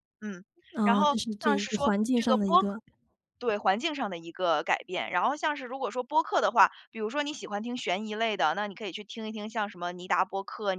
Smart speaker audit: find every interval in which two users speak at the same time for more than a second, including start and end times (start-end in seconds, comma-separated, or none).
0.8-2.8